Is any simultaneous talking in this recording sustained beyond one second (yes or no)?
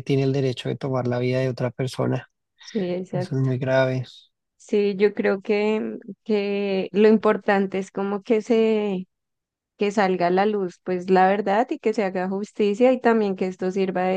no